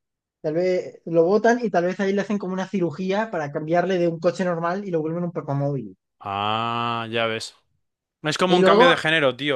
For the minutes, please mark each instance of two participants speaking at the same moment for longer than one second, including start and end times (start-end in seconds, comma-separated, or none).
none